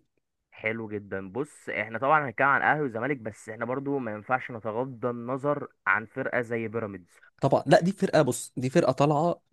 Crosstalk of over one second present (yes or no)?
no